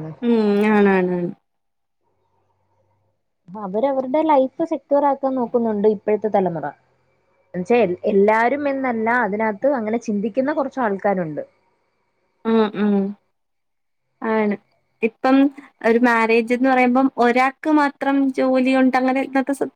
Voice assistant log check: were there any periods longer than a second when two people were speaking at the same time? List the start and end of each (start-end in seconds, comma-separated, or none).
none